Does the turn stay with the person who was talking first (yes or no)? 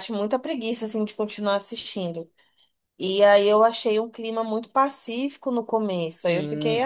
no